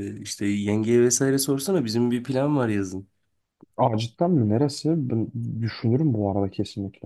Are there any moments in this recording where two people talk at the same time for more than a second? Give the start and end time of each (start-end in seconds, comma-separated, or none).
none